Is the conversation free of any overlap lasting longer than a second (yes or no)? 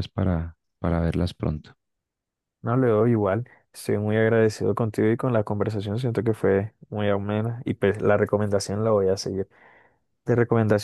yes